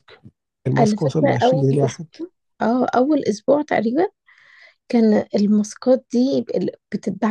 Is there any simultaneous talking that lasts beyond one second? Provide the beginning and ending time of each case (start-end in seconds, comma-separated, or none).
0.8-2.1